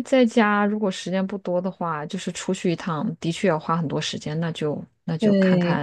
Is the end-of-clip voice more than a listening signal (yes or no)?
yes